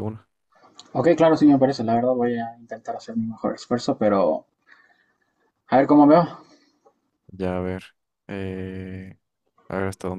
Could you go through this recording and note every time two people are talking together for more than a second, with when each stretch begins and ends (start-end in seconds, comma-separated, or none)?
none